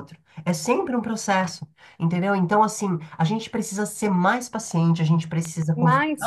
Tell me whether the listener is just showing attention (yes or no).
no